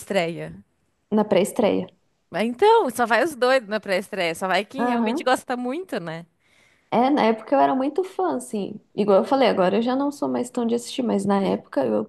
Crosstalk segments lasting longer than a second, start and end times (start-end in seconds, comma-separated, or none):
none